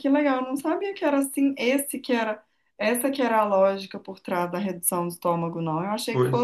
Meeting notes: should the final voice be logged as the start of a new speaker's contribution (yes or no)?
no